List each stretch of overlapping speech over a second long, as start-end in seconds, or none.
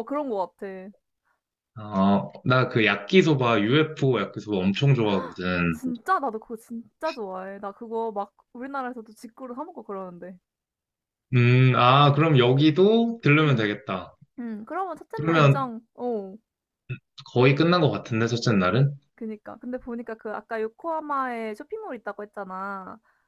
none